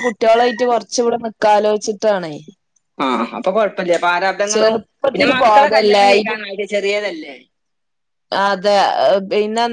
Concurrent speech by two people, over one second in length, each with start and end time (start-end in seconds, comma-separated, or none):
4.5-6.3